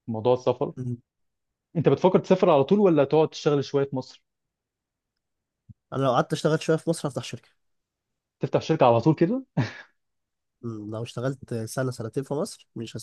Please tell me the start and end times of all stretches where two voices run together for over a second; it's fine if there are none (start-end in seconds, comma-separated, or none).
none